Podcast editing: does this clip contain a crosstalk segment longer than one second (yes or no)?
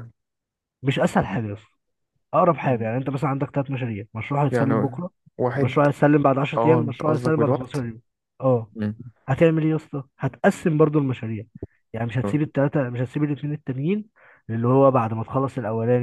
yes